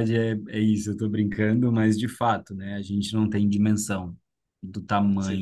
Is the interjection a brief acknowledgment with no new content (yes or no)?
yes